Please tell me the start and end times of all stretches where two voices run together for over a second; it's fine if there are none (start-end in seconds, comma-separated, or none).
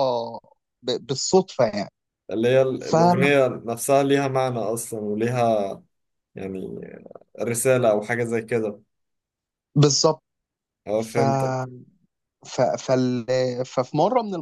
none